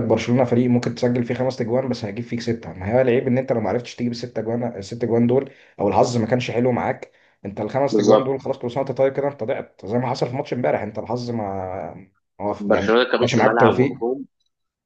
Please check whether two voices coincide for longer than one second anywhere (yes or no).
yes